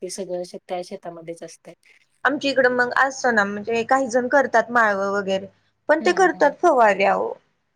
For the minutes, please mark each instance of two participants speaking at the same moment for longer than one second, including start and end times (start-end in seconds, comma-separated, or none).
none